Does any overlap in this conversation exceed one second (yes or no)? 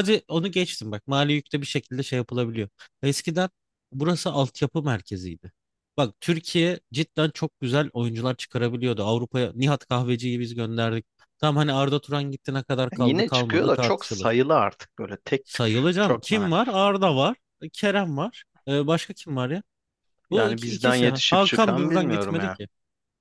yes